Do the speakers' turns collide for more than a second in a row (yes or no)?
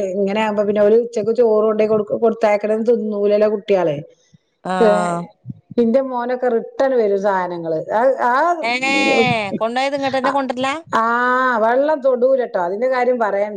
no